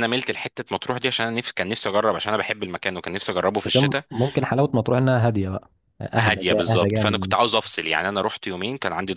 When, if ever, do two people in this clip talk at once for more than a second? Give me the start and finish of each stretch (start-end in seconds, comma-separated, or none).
6.2-7.8